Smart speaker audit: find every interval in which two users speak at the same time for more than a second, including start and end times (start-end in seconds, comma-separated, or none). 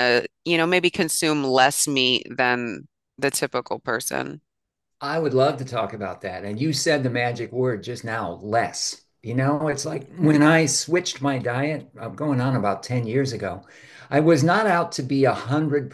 none